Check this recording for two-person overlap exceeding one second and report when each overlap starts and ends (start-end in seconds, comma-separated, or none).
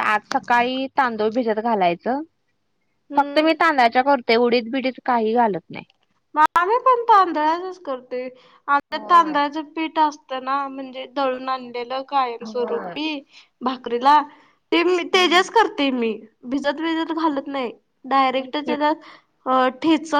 none